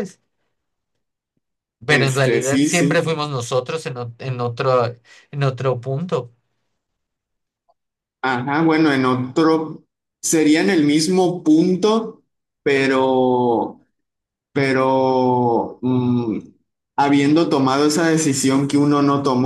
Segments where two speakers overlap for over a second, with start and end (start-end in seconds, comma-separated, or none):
1.9-3.2